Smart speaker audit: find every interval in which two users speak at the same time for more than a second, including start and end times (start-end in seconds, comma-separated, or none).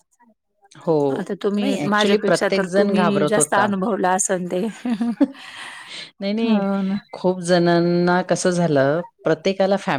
1.6-3.7